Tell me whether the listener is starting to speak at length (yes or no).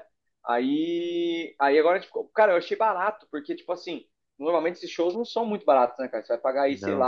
no